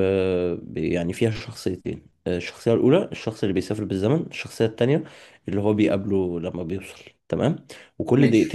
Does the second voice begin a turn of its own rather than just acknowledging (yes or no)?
no